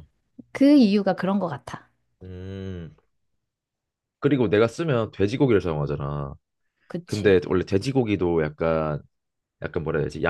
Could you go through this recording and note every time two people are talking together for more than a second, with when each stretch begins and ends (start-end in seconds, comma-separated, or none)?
none